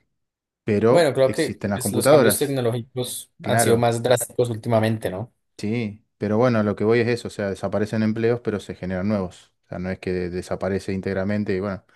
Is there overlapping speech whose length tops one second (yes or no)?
yes